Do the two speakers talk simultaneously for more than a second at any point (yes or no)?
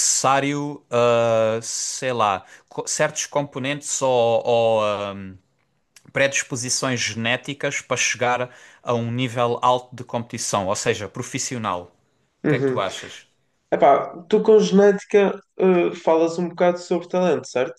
no